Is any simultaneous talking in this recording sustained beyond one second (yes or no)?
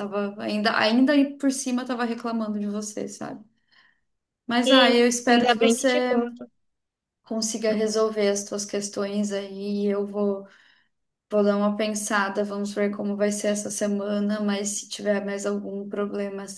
yes